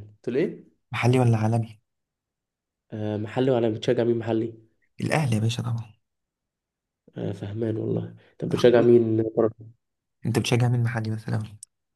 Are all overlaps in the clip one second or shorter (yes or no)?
yes